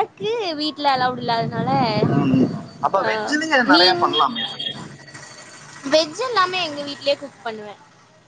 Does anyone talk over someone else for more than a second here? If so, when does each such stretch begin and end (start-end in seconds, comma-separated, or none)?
none